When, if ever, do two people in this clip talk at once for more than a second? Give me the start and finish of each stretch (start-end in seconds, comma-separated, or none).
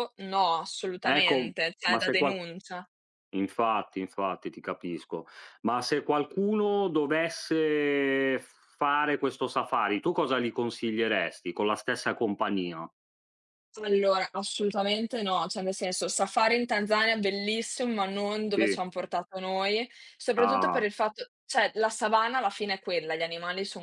1.0-2.4